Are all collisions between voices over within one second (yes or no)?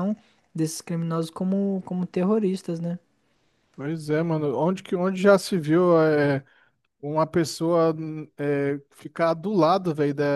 yes